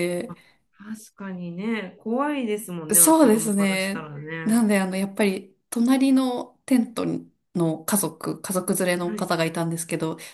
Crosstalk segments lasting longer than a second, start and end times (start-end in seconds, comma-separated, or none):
2.9-4.7